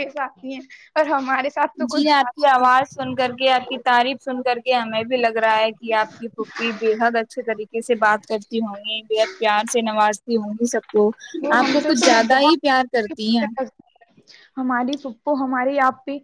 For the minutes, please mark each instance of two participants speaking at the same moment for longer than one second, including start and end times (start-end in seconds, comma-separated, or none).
11.6-13.5